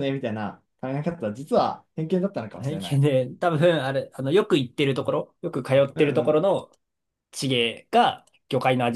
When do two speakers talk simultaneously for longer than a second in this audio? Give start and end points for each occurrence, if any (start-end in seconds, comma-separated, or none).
none